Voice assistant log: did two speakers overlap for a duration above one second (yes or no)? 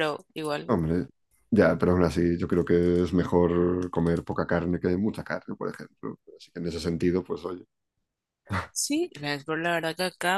no